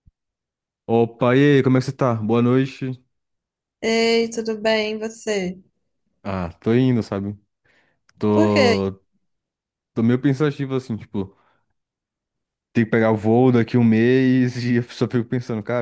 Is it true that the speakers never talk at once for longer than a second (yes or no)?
yes